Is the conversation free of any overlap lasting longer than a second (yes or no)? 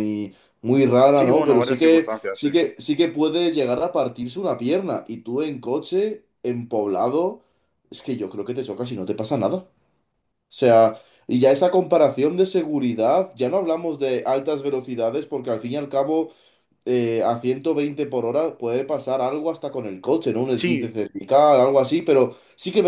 no